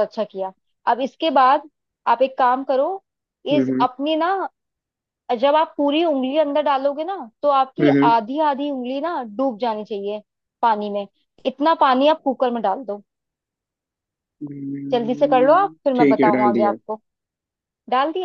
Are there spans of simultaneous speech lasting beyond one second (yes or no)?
yes